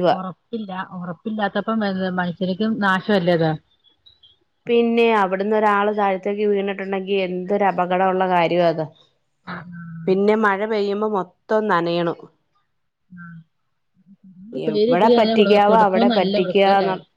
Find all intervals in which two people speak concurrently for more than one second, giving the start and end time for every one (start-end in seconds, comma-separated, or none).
14.7-16.3